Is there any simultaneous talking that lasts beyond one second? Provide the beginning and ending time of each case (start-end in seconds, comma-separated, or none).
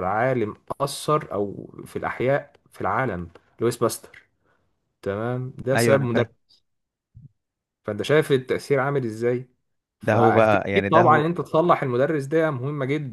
10.0-11.3